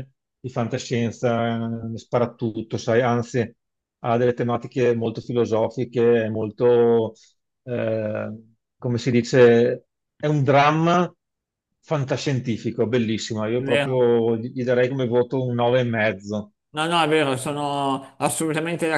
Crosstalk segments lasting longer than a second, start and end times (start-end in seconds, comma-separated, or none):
none